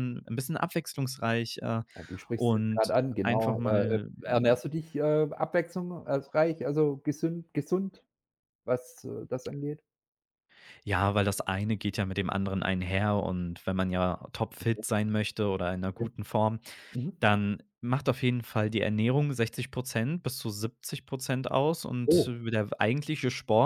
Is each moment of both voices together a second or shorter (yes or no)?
no